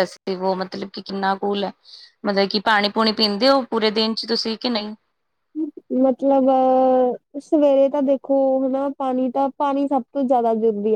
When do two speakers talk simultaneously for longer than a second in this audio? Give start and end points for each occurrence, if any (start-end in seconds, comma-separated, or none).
none